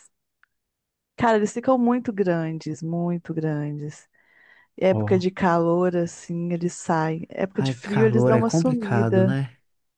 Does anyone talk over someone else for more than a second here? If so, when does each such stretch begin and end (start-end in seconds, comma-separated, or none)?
7.5-9.4